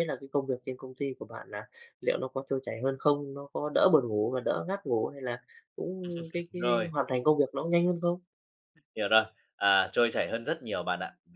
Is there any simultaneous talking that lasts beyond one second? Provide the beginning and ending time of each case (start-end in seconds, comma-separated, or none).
none